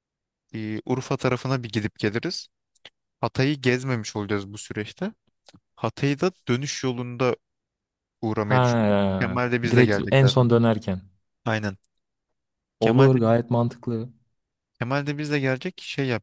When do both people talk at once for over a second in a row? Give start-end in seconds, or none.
8.4-10.5